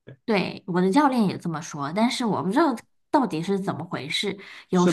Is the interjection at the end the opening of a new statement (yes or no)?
yes